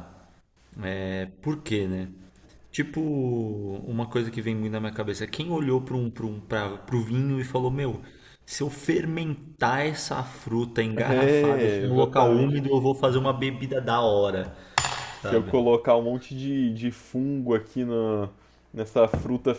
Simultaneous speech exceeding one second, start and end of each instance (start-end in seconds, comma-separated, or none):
11.3-12.7